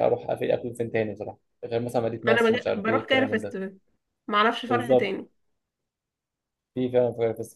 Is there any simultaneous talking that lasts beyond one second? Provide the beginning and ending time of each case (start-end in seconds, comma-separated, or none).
2.3-3.6